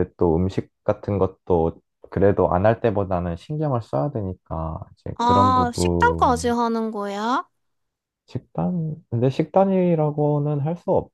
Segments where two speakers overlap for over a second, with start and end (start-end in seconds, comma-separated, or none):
5.2-6.5